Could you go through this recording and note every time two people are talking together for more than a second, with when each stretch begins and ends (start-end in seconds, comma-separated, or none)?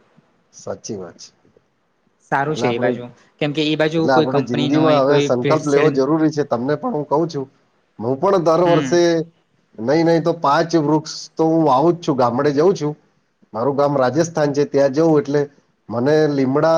4.0-5.9